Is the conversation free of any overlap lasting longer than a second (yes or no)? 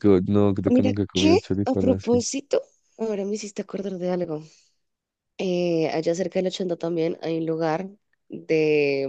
no